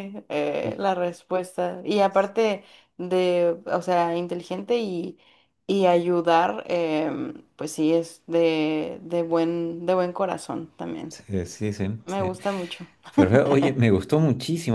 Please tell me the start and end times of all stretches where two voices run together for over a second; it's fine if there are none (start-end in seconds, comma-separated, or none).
none